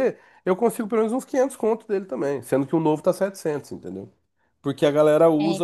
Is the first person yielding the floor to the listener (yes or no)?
no